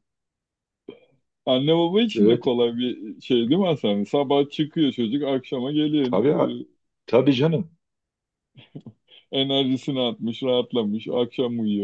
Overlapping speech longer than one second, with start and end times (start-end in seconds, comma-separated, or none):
none